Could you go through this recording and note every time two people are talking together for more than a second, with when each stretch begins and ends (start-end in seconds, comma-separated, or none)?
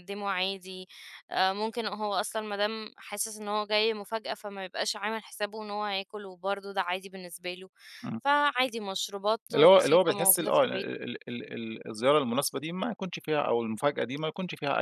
9.5-10.9